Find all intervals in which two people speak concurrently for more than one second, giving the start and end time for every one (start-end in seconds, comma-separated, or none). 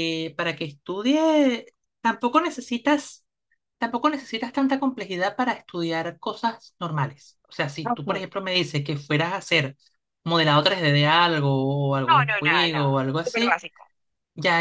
12.1-13.6